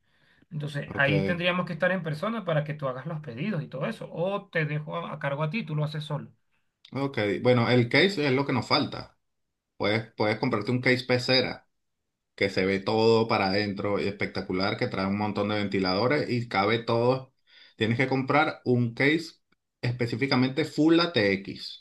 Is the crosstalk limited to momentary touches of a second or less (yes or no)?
yes